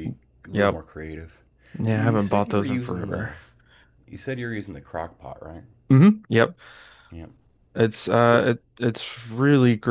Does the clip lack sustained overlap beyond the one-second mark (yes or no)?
no